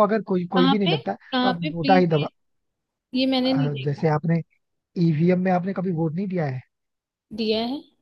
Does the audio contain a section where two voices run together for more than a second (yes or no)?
yes